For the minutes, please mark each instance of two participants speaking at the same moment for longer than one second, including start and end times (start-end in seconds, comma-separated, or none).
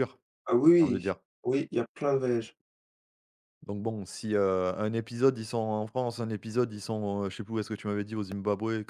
none